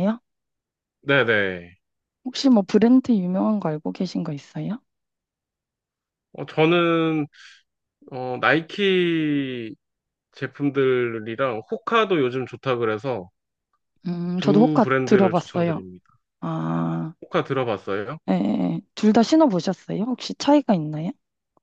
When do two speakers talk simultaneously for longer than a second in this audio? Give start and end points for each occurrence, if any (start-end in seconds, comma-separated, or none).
14.4-15.8